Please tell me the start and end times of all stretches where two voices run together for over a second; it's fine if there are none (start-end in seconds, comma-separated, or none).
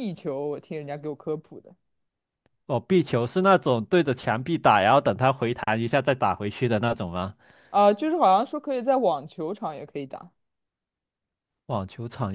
none